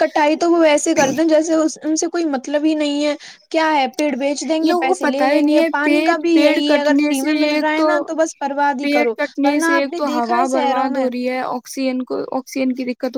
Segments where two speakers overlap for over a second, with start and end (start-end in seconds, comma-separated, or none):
4.7-7.7